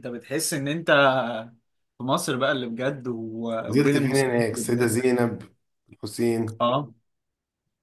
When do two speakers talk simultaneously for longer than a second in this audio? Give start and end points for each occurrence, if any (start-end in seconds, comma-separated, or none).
3.7-5.0